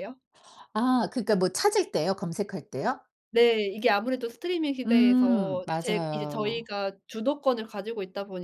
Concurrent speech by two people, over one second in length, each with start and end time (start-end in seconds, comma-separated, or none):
4.8-6.7